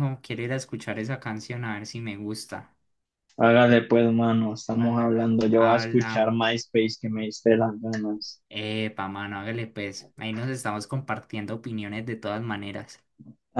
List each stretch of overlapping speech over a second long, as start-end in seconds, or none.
4.8-6.6